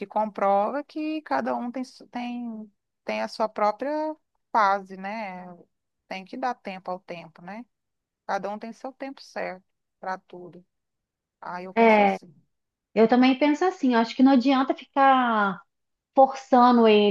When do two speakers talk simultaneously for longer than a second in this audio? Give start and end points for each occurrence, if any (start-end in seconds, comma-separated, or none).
none